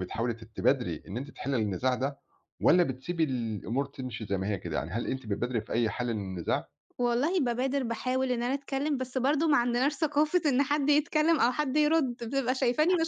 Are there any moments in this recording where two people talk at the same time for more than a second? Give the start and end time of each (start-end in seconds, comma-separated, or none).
none